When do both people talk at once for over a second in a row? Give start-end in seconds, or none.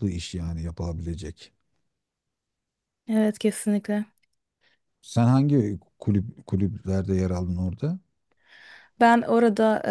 none